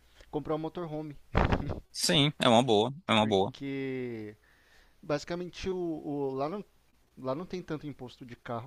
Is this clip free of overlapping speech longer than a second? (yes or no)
yes